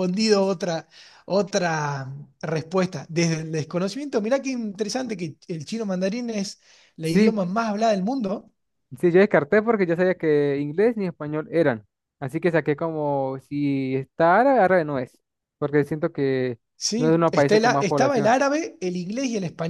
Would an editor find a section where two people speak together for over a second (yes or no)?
yes